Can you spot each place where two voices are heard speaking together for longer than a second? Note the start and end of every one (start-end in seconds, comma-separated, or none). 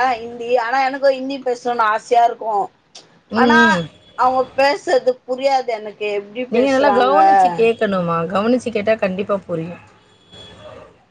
none